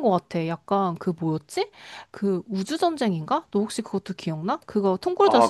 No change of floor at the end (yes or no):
no